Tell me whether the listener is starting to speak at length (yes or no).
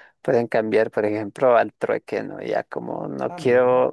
no